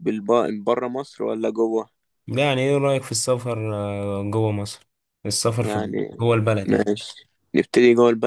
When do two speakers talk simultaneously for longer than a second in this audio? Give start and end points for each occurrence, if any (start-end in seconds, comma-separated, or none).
none